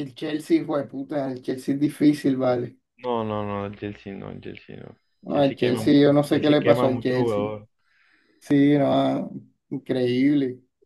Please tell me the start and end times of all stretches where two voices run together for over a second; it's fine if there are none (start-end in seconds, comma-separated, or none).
5.2-7.4